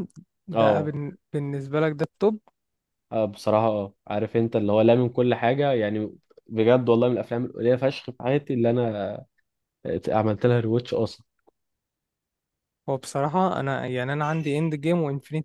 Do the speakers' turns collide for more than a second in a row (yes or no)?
no